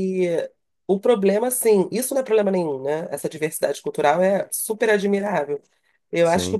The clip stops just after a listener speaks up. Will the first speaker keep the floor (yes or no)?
yes